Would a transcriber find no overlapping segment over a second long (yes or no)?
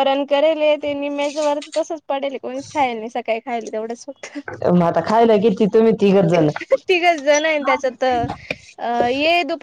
yes